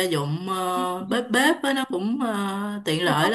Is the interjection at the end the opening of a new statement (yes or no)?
no